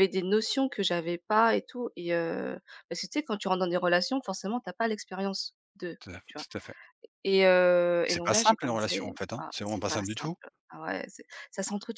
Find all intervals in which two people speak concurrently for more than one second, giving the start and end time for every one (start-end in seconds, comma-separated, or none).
8.1-10.4